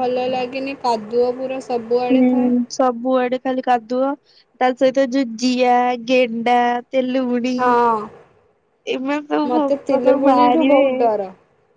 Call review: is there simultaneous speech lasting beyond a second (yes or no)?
yes